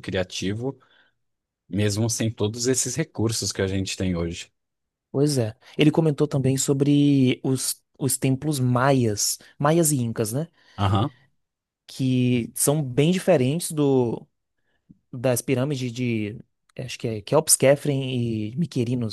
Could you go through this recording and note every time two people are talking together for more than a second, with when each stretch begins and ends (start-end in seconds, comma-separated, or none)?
none